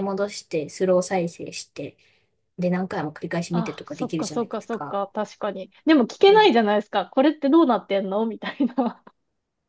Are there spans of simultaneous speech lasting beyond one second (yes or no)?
yes